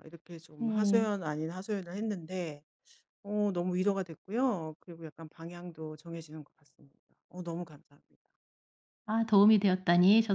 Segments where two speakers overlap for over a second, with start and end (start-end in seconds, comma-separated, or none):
none